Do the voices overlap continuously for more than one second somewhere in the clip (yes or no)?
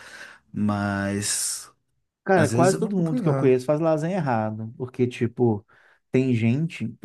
yes